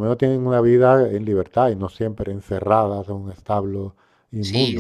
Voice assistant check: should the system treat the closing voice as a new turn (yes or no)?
yes